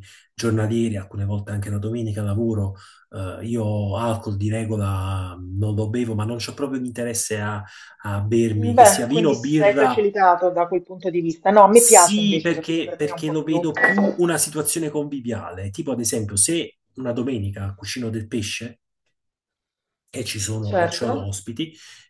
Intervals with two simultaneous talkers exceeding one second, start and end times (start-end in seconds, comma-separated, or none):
8.5-10.1, 11.7-13.6